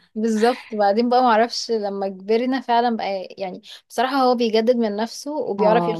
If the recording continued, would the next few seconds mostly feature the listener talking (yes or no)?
yes